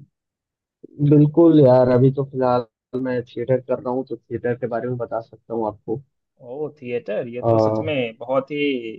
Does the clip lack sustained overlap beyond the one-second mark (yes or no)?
yes